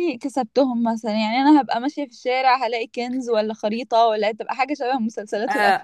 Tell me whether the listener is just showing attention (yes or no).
no